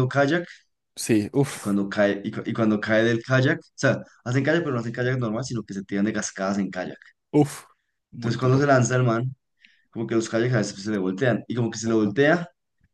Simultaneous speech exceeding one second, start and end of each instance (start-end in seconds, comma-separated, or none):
none